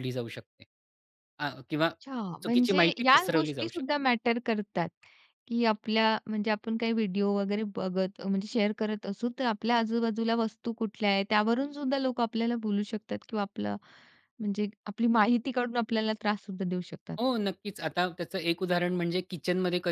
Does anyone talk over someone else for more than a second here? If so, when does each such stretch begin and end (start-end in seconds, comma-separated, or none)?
2.4-3.9